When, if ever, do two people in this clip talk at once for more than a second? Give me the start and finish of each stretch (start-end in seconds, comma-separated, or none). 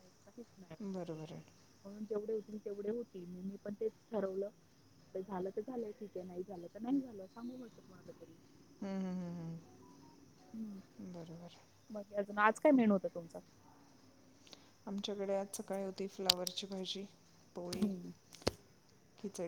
none